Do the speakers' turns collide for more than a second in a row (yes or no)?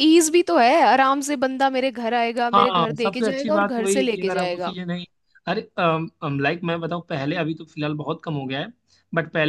yes